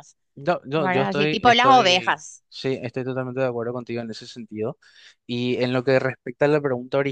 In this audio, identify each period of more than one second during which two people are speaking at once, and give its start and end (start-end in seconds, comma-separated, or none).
0.8-2.4